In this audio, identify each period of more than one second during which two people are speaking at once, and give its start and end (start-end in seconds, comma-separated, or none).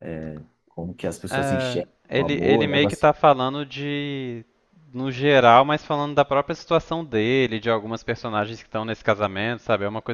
1.3-3.1